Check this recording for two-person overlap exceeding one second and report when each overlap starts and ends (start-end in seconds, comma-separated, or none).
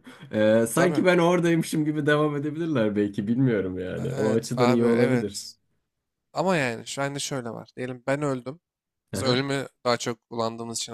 4.0-5.5